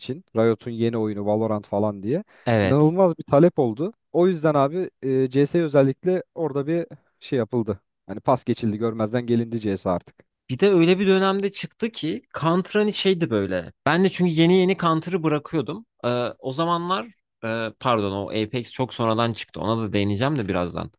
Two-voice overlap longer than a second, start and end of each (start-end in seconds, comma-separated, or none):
none